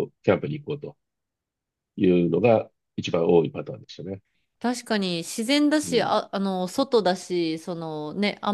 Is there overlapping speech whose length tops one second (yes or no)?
no